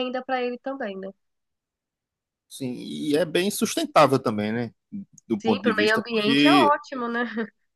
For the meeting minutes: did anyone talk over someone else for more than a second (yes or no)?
yes